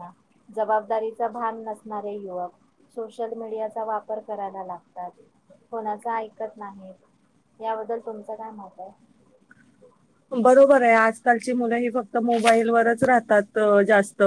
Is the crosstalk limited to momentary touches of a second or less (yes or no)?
yes